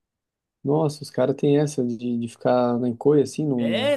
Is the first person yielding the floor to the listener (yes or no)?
yes